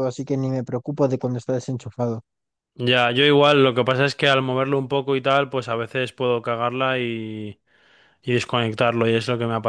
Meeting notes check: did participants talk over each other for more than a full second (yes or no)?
no